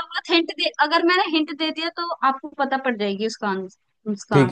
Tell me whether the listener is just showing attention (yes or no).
no